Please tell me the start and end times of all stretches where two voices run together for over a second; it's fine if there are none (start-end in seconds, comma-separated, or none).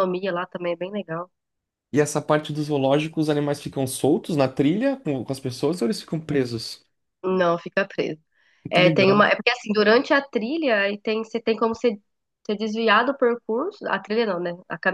none